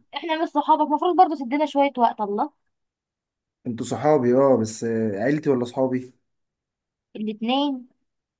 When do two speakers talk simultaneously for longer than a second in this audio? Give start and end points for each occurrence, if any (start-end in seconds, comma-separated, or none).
none